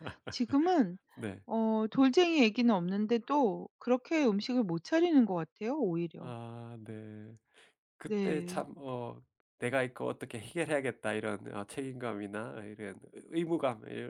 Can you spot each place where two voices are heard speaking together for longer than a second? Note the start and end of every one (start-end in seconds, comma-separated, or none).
none